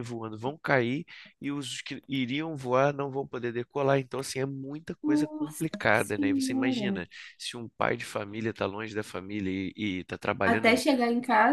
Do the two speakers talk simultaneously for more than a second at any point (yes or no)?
yes